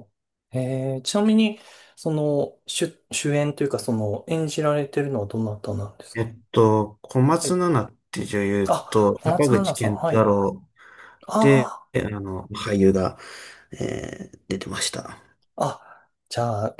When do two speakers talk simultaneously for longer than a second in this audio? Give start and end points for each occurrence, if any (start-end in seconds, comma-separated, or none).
8.7-10.3